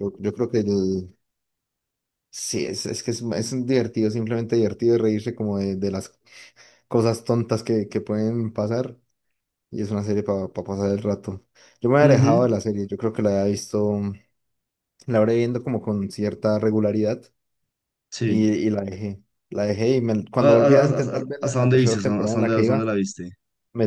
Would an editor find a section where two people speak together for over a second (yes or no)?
yes